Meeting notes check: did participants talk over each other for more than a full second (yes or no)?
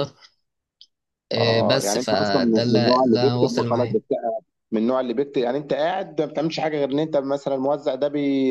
yes